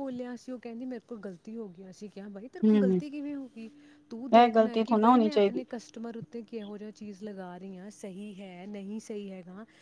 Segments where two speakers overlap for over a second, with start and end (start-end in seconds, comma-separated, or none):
4.2-5.6